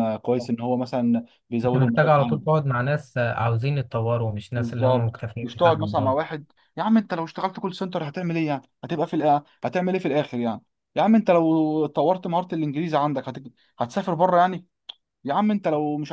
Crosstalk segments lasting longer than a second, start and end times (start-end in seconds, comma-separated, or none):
4.5-6.2